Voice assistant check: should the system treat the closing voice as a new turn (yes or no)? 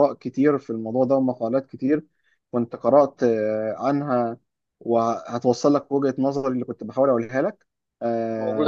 no